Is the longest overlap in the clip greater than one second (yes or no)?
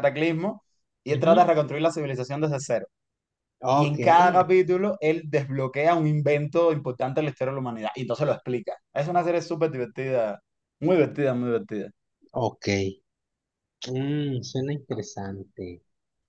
no